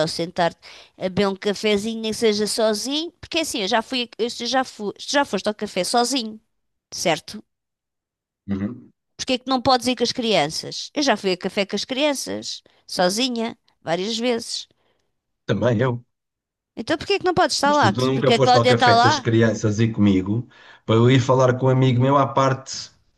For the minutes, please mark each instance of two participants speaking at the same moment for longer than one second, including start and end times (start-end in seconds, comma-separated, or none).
17.6-19.3